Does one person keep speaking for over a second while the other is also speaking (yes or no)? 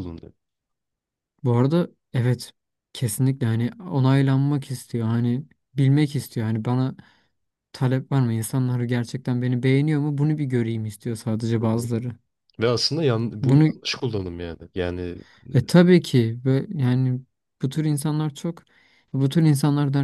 no